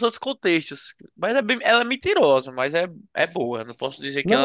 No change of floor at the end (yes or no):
no